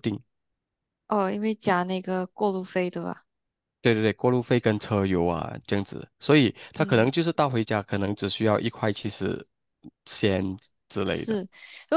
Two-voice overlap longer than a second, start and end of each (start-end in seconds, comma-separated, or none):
none